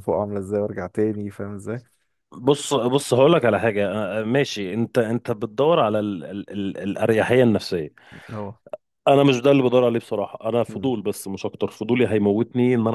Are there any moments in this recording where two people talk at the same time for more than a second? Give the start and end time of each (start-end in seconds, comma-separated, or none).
none